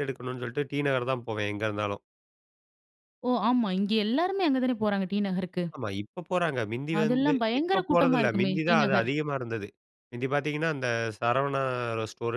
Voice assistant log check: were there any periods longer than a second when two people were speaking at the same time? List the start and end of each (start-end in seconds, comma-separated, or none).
7.0-9.1